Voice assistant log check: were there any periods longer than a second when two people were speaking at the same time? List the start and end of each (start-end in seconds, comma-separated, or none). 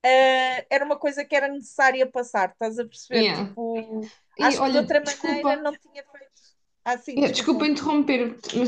4.4-5.7